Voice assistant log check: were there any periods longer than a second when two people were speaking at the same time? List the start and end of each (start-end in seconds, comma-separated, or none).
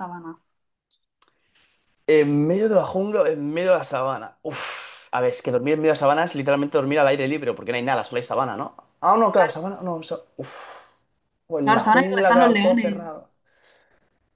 11.6-13.0